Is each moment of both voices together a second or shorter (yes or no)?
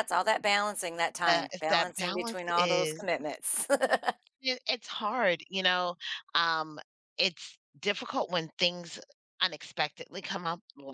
no